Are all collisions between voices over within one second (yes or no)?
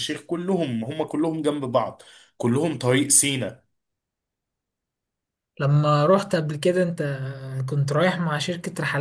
yes